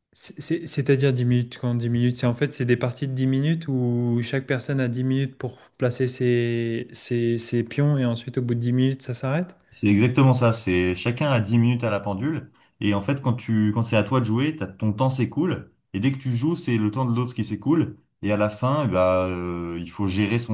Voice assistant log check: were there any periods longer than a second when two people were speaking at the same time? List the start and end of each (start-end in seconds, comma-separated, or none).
none